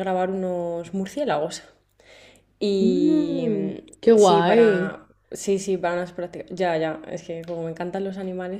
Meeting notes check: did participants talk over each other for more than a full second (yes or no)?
yes